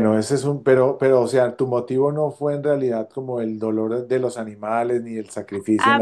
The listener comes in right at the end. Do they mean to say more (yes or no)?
yes